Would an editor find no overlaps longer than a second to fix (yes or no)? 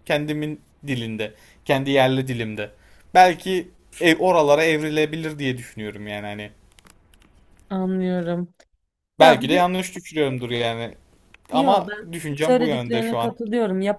no